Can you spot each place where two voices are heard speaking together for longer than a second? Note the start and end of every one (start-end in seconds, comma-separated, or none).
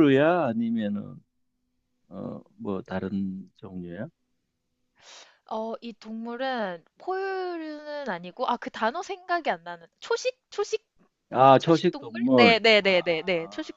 11.6-13.0